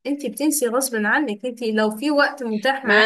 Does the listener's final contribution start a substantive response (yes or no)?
yes